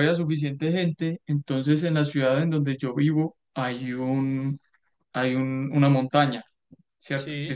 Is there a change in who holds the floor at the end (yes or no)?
no